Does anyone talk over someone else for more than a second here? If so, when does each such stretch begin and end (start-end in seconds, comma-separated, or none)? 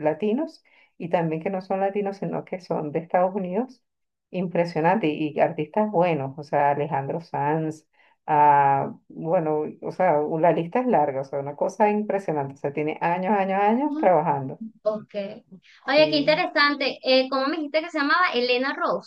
none